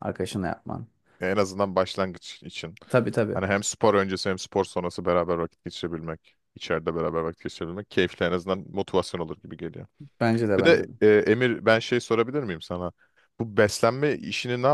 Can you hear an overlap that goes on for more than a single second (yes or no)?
no